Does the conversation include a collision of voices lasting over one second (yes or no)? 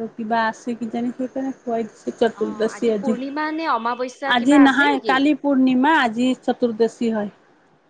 yes